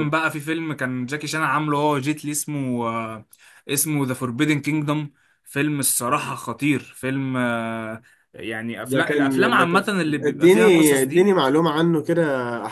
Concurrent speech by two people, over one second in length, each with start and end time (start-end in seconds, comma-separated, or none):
8.8-11.3